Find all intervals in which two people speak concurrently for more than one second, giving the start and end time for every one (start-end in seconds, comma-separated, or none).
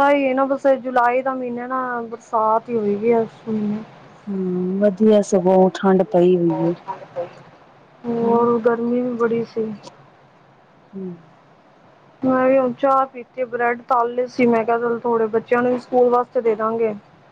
none